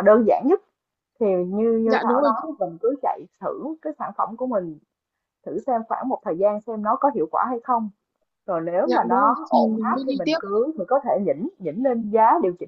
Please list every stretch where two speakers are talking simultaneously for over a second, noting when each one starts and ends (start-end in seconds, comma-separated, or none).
8.8-10.4